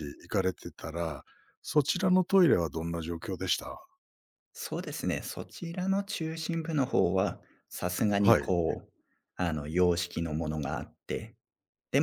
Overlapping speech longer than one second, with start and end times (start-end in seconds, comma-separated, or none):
none